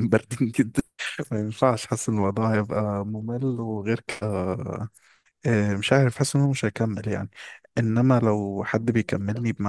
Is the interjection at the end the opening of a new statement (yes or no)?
no